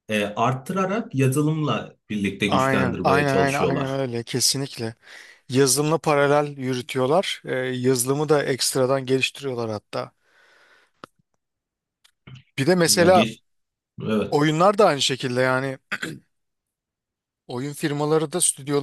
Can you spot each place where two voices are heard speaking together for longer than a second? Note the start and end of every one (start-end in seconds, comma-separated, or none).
2.5-4.0